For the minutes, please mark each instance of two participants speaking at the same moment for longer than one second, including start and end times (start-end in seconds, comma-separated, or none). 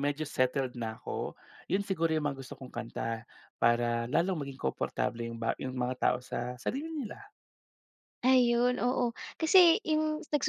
none